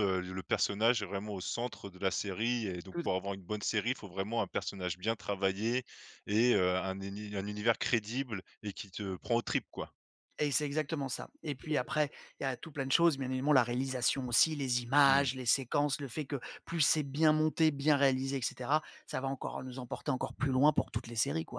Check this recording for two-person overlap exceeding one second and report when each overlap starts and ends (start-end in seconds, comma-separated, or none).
none